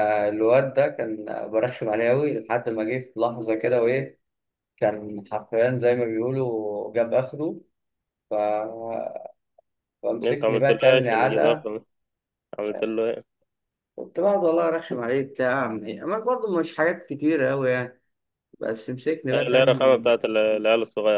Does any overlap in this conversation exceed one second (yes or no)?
yes